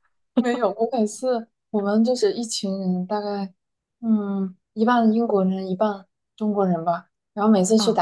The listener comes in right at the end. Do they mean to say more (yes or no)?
no